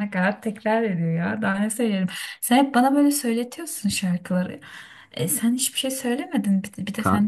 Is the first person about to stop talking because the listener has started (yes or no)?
yes